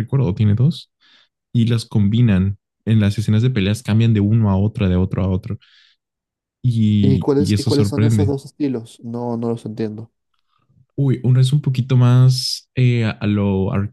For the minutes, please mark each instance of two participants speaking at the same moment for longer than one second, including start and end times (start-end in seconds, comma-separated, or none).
7.0-8.3